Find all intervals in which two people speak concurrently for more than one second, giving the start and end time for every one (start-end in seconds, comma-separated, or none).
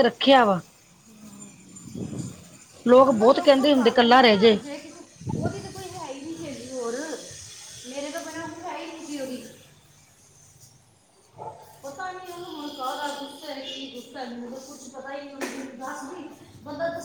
2.9-4.6